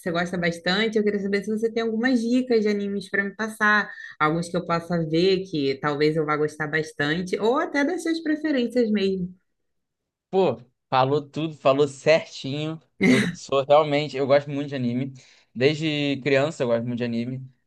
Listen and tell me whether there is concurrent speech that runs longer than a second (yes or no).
no